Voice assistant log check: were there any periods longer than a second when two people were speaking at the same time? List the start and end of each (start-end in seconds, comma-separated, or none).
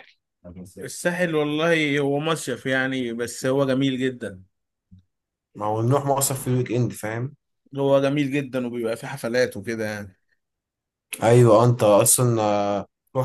none